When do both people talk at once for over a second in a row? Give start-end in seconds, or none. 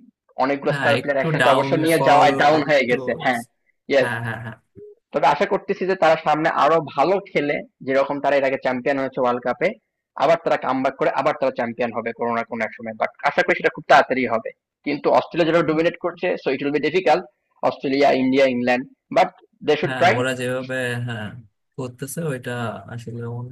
0.7-2.9